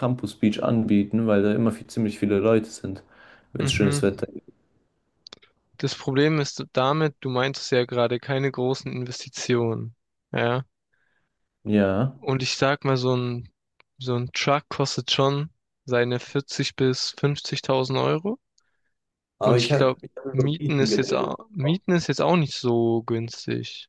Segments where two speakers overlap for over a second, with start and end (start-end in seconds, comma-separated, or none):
19.4-21.4